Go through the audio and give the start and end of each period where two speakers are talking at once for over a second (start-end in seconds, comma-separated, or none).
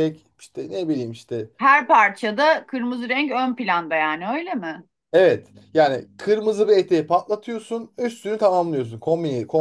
none